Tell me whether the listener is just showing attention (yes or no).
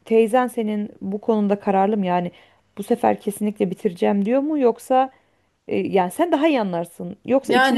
yes